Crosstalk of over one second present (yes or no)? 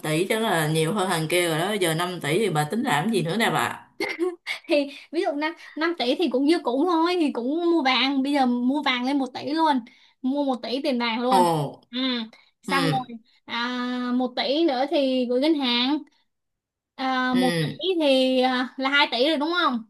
no